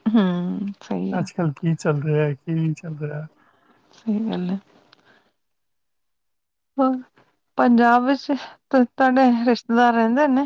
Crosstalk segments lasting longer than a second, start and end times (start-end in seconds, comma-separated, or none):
none